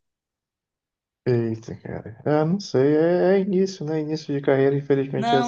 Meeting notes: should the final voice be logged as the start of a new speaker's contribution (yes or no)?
yes